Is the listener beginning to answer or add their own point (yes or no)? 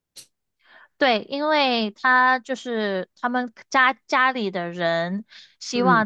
no